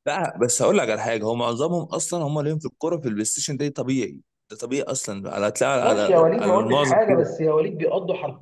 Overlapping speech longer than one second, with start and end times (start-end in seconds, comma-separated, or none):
5.8-7.3